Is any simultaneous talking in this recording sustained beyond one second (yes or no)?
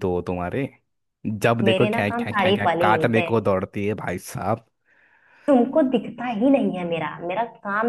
yes